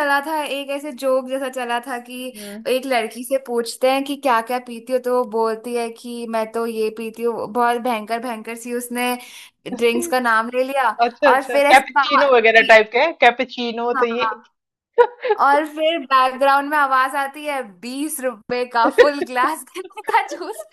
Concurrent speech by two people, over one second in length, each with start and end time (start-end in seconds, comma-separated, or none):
11.3-12.9